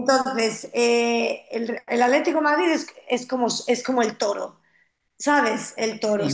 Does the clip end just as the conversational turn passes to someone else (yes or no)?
no